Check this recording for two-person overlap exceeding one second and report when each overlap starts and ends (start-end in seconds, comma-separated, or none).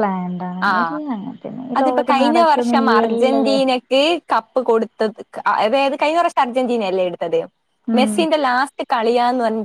1.8-3.5